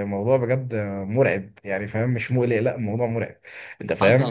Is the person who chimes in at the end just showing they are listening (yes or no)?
yes